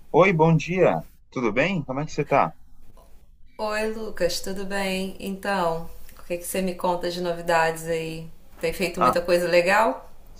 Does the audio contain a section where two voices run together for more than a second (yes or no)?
no